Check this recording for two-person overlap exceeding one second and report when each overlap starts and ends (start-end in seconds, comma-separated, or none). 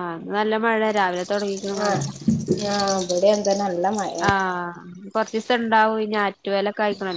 none